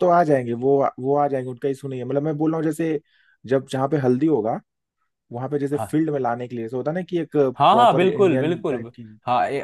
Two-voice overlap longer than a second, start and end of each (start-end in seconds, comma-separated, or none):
7.6-9.0